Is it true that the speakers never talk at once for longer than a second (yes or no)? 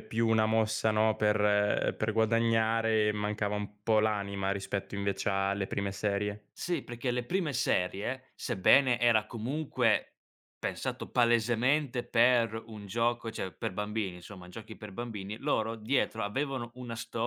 yes